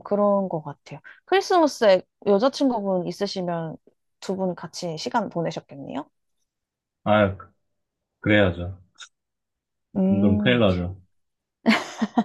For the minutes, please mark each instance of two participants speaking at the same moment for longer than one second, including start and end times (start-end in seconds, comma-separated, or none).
none